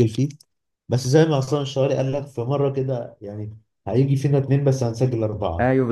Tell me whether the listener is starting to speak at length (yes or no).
yes